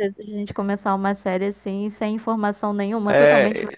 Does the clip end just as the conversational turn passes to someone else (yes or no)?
yes